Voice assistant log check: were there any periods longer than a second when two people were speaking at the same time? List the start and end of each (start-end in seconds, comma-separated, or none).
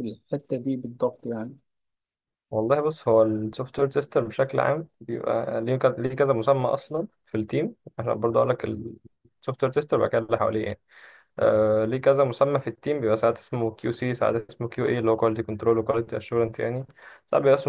none